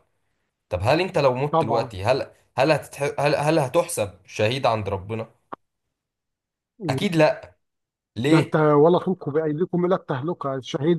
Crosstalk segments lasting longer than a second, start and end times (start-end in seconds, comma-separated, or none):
none